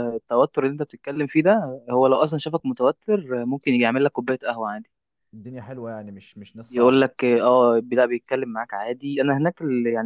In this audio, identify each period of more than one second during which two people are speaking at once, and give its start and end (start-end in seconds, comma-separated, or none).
none